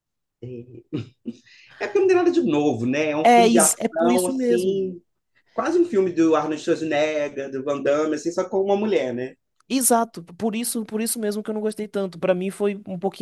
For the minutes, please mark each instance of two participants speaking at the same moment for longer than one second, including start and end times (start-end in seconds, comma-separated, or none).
3.2-4.8